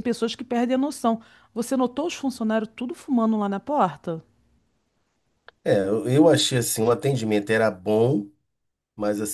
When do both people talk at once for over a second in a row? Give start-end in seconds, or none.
none